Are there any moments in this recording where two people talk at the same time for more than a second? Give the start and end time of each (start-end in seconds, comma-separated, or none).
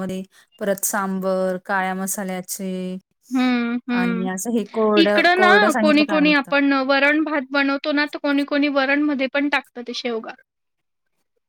4.0-6.5